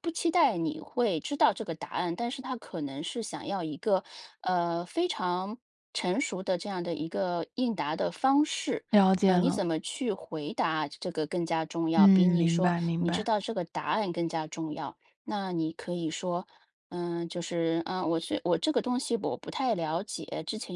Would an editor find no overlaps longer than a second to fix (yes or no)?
no